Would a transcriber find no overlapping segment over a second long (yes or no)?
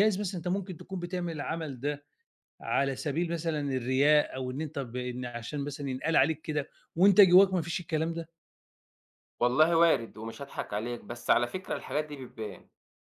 yes